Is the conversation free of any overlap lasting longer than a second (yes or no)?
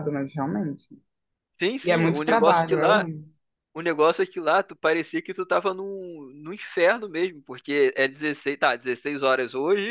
no